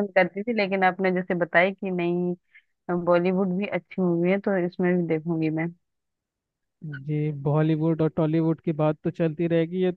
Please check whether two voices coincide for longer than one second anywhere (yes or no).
no